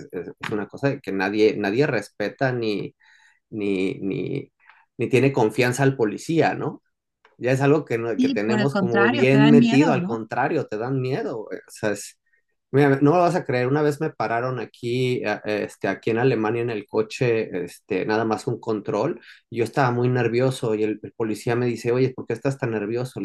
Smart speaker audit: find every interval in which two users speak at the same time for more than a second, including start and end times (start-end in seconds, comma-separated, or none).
8.2-10.2